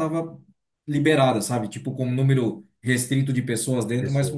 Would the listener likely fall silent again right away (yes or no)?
yes